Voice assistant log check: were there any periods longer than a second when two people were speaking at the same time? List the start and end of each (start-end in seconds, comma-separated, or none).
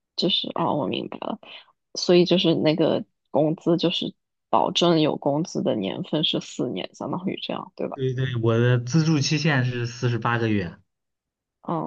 none